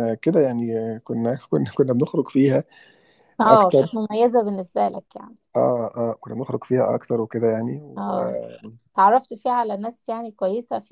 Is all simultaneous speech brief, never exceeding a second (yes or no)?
yes